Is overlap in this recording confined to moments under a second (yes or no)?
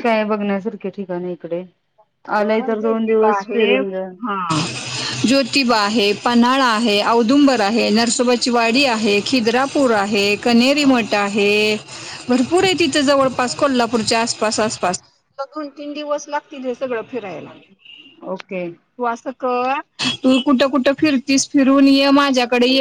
no